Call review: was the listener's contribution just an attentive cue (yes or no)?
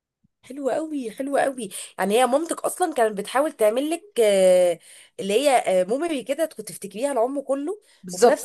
no